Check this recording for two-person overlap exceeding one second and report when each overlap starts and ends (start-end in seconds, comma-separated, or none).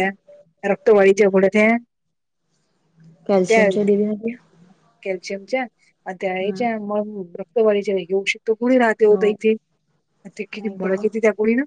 none